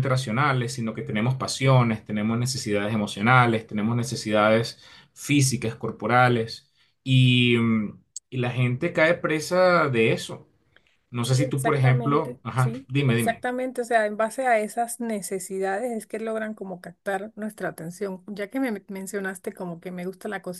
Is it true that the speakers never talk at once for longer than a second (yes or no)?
no